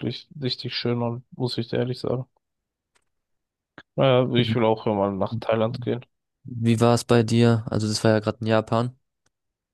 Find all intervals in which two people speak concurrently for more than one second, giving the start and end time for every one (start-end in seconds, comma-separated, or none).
none